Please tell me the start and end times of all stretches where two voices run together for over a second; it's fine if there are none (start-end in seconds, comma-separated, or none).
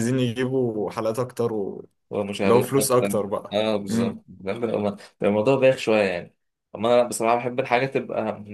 2.4-4.2